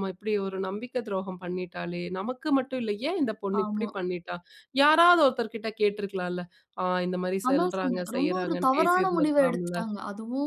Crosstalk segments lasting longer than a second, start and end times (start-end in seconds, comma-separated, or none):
7.5-9.8